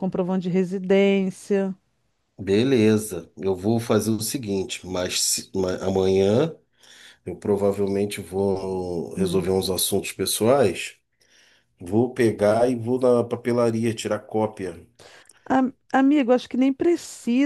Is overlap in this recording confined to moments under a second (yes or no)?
yes